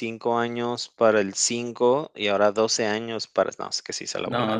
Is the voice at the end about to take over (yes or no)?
yes